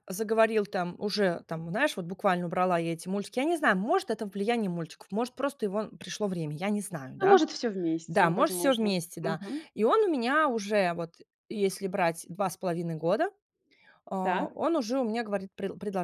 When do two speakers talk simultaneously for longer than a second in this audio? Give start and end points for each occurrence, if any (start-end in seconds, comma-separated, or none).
8.1-9.7